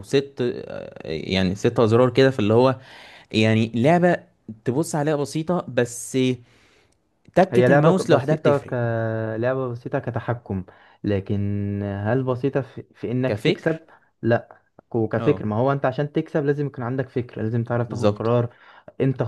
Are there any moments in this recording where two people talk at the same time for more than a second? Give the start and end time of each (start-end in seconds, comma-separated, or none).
7.5-8.7